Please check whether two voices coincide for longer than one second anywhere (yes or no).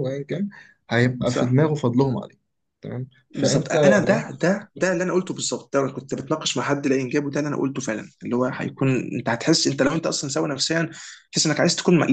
yes